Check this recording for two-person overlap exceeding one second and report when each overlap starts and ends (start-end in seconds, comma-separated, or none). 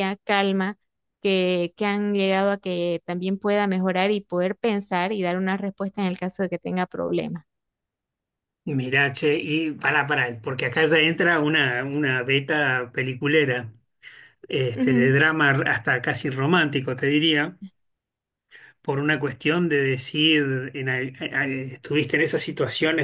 none